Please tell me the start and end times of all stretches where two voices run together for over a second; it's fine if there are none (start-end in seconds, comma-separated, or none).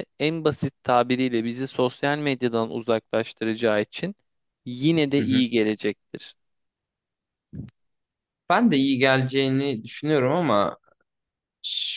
none